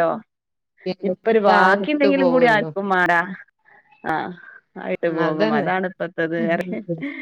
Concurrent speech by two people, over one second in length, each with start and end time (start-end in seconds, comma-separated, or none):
1.1-2.7